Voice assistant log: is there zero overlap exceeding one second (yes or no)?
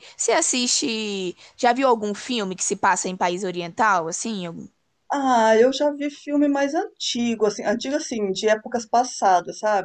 yes